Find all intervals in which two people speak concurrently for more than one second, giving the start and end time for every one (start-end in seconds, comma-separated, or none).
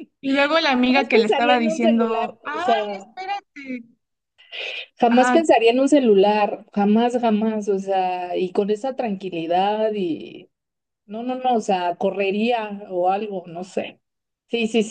0.9-2.9